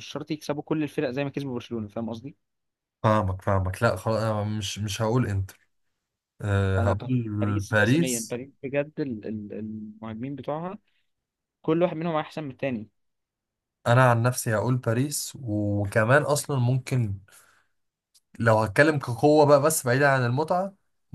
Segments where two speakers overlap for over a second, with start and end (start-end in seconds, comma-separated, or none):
6.8-8.4